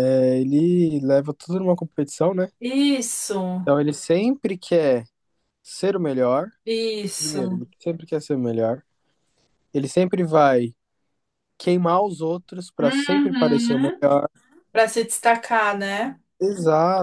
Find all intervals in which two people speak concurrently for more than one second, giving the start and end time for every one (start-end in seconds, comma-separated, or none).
12.8-14.0